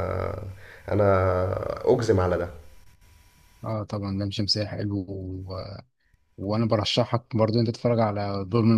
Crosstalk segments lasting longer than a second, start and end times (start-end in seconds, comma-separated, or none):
none